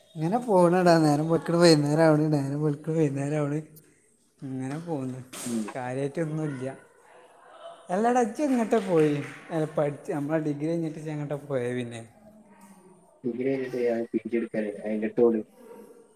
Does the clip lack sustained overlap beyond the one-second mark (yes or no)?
yes